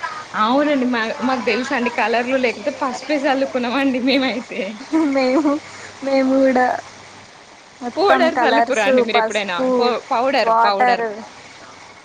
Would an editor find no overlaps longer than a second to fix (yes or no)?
no